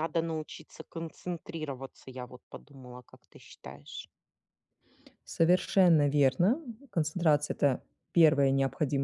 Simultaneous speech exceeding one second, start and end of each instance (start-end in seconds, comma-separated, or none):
none